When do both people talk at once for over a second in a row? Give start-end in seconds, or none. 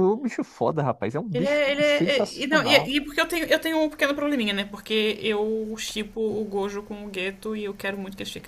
1.3-2.9